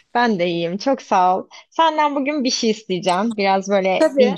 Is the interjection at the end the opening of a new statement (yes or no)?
no